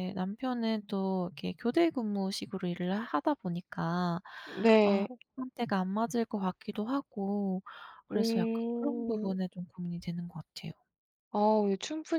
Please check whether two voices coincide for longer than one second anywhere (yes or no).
yes